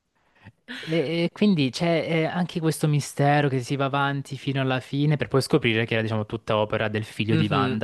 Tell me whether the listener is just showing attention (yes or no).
no